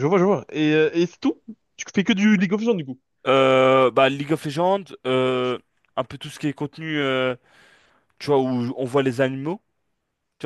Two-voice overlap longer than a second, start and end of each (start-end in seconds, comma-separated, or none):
none